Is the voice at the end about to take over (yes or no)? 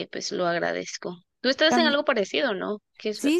yes